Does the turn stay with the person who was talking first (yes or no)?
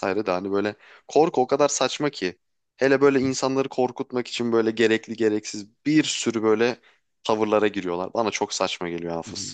no